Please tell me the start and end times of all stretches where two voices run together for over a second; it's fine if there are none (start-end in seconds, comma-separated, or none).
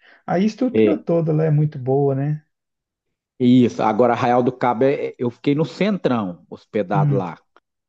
none